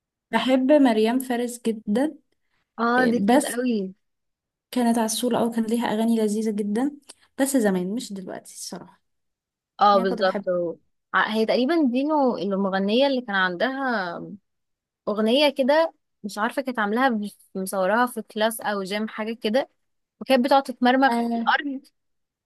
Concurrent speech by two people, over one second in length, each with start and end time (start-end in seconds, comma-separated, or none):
none